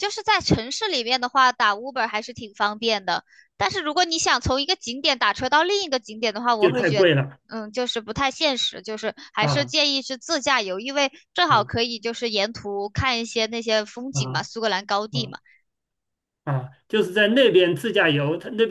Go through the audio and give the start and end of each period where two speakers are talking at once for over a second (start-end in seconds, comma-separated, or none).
none